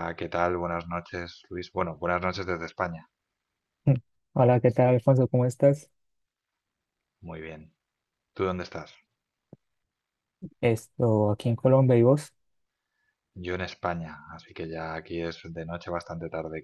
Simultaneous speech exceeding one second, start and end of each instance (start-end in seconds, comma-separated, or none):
none